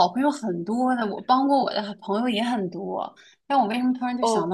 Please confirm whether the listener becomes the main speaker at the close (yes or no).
no